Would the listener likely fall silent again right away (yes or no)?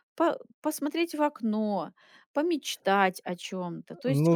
no